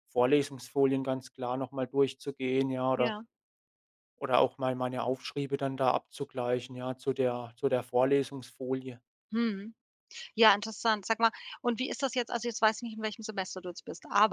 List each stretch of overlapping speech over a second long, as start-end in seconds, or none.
none